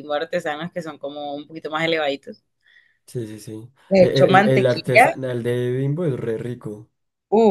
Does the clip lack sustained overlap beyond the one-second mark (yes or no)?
no